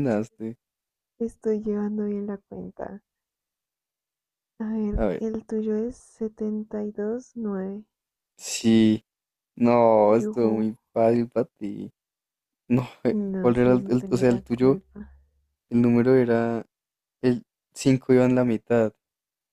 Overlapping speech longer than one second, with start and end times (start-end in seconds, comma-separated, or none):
13.1-14.8